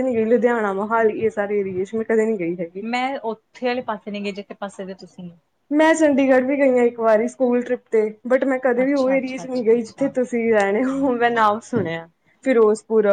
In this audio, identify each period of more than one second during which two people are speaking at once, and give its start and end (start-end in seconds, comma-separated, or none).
8.8-10.1